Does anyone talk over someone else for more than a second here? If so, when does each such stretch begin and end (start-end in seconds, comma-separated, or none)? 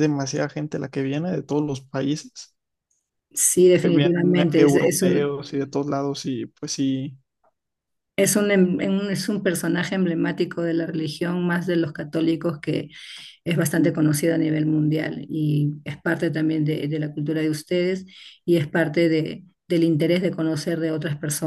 3.8-5.3